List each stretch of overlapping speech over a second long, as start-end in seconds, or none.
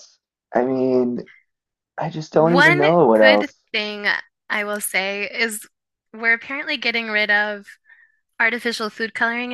2.3-3.6